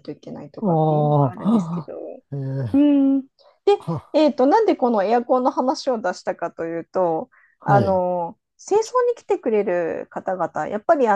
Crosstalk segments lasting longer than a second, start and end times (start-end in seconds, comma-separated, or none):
0.6-1.9